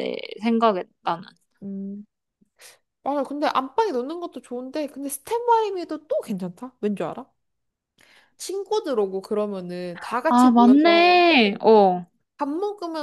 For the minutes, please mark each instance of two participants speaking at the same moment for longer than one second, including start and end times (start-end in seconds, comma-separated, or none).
10.3-11.6